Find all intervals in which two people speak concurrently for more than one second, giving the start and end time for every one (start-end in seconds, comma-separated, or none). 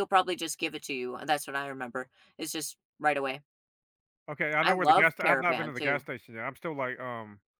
4.6-6.1